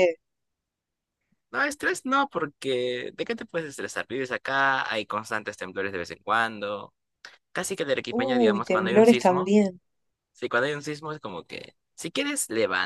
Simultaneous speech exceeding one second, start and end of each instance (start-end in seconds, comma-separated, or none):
8.1-9.6